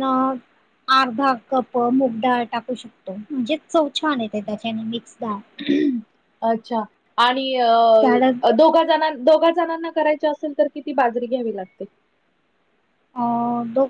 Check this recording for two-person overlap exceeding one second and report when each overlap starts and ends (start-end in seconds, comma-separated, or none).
none